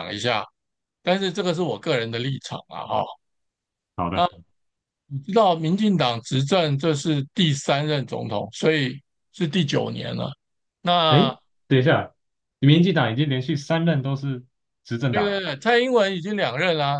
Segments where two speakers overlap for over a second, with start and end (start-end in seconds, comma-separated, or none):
none